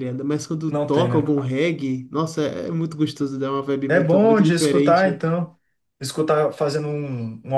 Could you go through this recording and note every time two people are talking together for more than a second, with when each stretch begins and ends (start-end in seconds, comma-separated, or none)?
3.9-5.2